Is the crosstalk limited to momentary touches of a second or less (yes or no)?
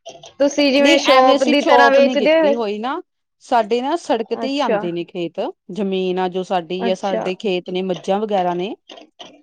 no